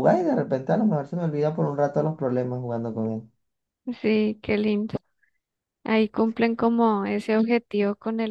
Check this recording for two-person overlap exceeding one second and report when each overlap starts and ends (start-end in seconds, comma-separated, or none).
none